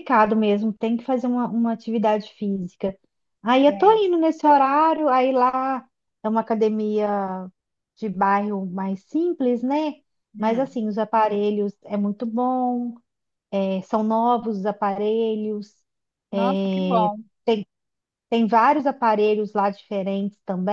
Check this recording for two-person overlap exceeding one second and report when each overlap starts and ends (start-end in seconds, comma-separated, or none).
none